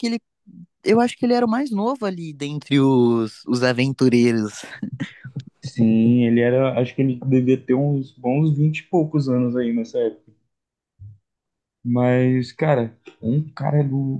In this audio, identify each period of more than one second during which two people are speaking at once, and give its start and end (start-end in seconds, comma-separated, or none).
none